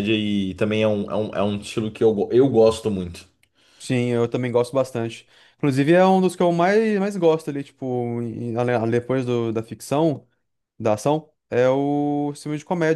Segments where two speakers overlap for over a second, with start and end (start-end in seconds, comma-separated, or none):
none